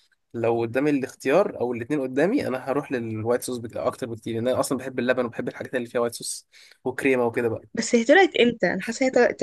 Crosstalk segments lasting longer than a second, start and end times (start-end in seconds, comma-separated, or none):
none